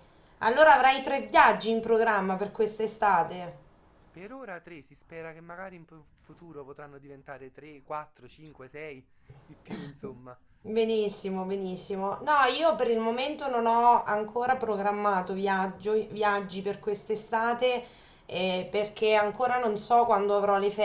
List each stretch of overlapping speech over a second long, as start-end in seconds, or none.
none